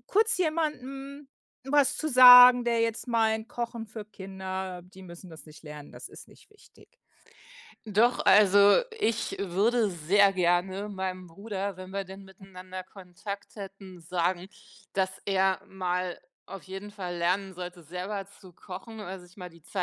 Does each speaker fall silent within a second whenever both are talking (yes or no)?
yes